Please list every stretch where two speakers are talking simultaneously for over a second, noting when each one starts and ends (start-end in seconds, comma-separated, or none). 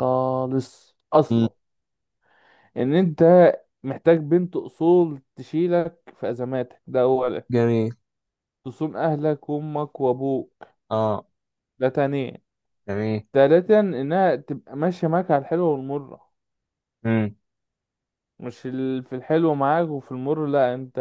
none